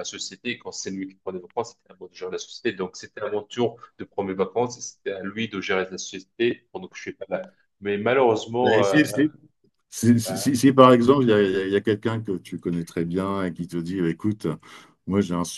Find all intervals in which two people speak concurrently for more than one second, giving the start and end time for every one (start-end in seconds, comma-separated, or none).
none